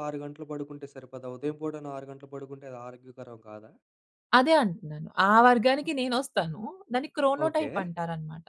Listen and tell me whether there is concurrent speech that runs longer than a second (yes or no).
no